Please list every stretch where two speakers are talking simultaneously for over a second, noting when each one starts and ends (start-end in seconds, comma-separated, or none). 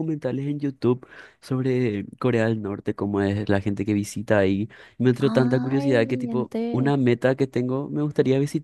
5.2-6.9